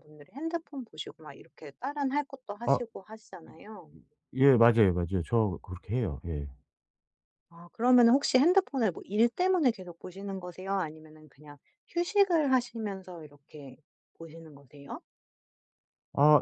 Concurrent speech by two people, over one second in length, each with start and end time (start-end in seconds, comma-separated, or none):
none